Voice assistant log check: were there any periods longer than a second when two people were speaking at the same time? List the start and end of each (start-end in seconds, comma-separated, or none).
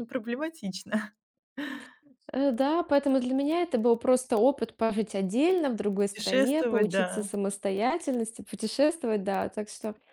6.0-7.3